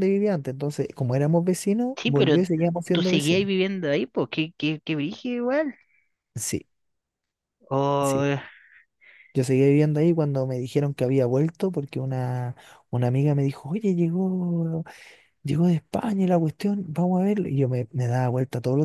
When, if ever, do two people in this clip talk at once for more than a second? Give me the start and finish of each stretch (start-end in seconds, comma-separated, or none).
1.9-3.5